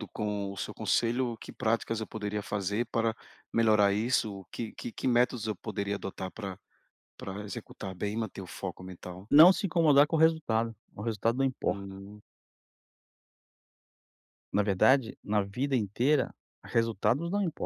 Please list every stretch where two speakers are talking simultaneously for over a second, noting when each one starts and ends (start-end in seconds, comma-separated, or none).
none